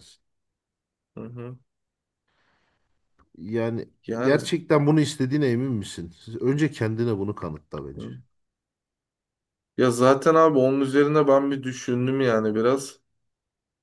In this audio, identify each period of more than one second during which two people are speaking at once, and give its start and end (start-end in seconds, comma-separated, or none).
none